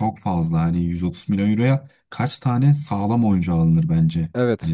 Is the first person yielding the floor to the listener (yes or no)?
no